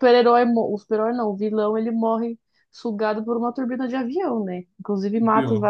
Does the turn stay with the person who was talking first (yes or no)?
yes